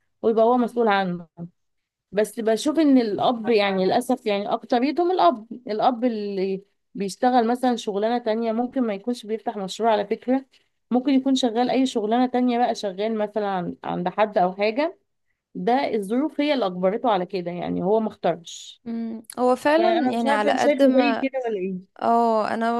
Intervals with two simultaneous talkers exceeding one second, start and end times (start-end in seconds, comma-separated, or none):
19.8-21.2